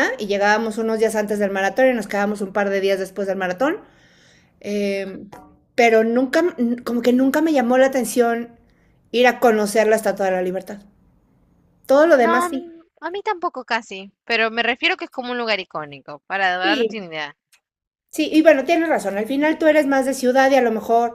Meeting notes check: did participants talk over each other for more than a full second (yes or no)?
no